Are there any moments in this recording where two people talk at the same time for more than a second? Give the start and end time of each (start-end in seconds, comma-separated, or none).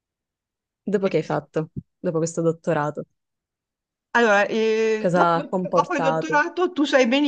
5.0-6.4